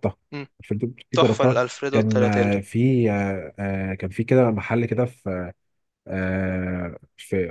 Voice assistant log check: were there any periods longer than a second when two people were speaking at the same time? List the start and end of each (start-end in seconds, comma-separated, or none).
1.1-2.6